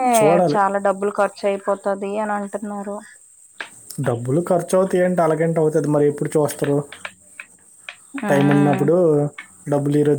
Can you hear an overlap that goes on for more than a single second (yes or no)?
no